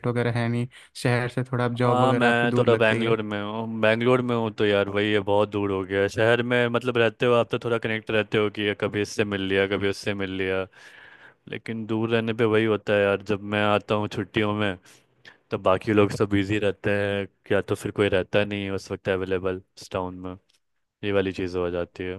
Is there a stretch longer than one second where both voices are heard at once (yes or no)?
yes